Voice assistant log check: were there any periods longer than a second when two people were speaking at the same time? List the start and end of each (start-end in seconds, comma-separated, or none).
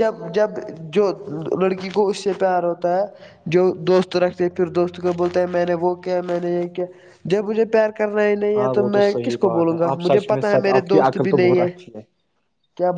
8.6-11.7